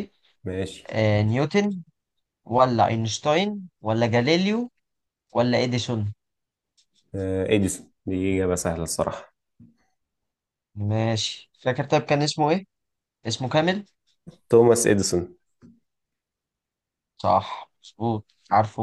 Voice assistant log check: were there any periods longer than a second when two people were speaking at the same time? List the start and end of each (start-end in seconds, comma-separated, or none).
none